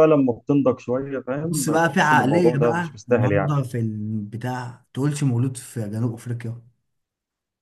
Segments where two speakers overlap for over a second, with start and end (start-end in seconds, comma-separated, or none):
1.4-3.5